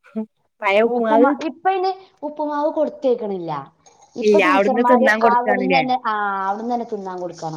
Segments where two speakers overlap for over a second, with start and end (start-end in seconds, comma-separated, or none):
4.3-5.8